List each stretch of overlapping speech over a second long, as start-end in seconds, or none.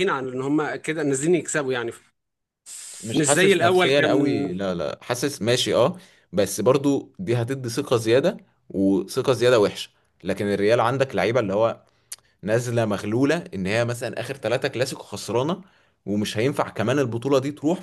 3.1-4.4